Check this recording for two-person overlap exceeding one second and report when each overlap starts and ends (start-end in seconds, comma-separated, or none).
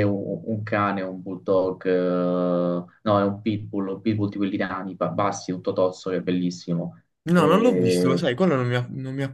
none